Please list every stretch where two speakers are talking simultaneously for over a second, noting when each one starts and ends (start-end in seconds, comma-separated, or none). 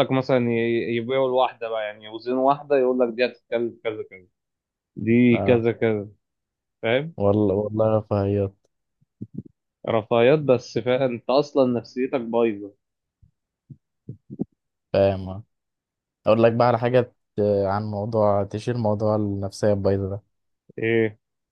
none